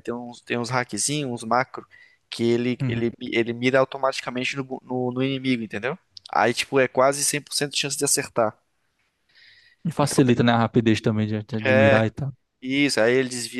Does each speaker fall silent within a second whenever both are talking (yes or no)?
yes